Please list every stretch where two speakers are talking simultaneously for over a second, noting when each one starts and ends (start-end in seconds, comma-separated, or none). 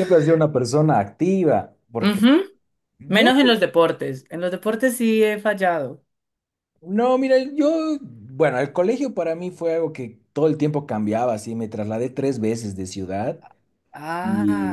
none